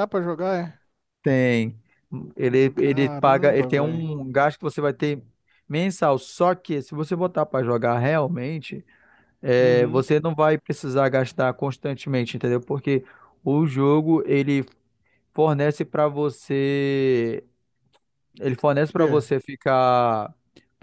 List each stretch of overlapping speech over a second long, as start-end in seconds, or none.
2.7-4.1